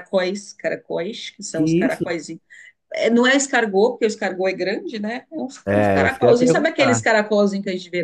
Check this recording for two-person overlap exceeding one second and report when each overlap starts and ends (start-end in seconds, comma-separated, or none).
5.7-7.1